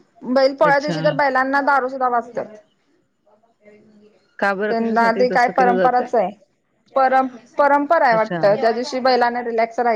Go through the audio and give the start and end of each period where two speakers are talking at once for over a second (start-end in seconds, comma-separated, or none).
4.7-6.1